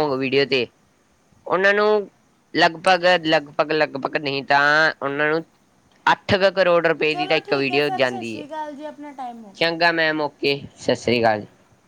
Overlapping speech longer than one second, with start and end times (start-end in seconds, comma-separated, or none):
7.1-9.7